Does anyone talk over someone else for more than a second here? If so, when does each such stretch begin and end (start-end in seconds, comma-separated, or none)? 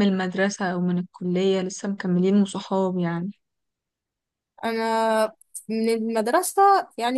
none